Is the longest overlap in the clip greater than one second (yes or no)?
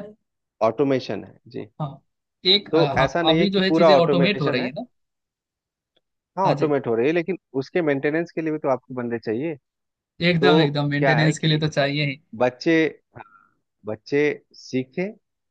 yes